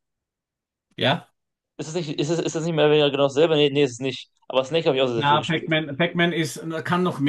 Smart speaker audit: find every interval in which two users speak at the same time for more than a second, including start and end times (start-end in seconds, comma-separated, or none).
none